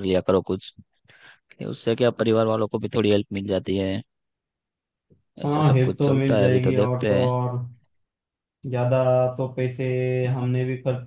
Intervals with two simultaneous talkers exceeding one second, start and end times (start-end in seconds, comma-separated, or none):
5.4-7.3